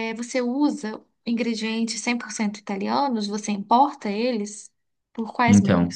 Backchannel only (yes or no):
no